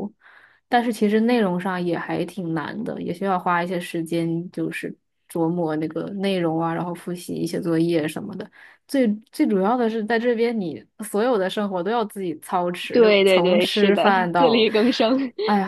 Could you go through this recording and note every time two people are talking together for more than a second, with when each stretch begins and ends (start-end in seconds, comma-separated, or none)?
12.9-14.7